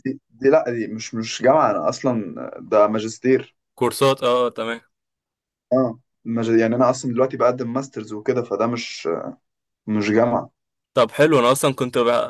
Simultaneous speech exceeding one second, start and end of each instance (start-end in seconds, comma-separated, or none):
none